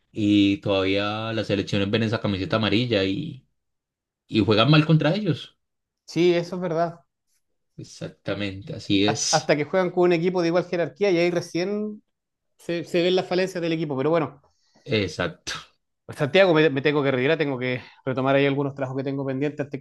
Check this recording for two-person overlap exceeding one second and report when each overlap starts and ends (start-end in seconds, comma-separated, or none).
none